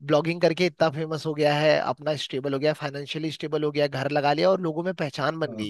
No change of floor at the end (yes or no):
no